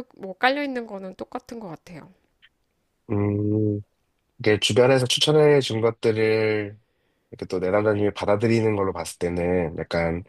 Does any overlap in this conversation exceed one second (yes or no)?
no